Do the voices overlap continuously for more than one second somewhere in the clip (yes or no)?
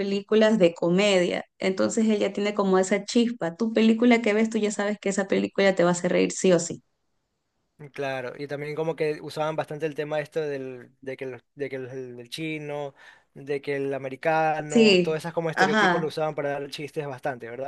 yes